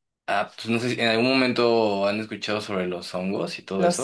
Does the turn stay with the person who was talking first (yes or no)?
no